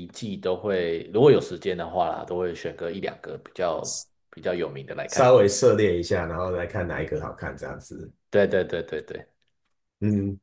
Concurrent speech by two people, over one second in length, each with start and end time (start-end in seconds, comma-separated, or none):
none